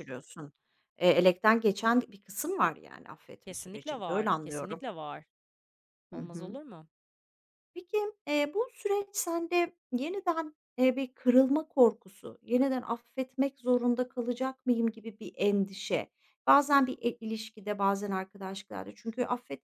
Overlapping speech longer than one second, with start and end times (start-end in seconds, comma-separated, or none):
3.4-4.8